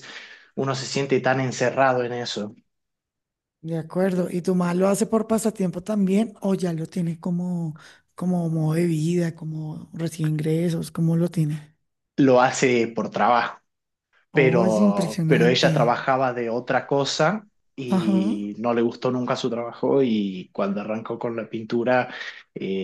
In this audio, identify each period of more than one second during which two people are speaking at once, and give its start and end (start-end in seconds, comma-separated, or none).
14.3-15.9